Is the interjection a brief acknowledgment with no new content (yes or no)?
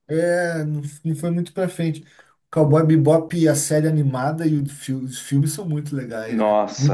no